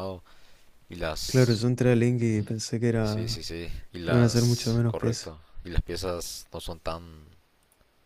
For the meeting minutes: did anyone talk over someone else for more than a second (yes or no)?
yes